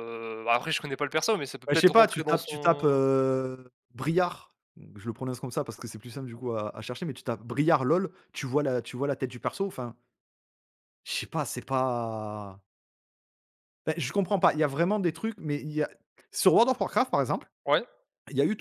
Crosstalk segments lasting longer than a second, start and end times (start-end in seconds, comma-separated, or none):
1.7-3.0